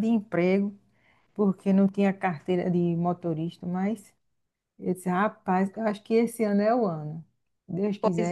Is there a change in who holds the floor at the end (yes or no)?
yes